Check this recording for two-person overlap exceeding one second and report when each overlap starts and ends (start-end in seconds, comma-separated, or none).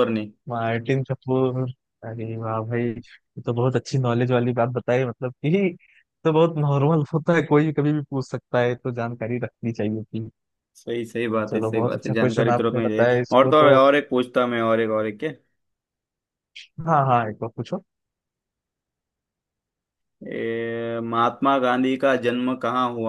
11.5-13.8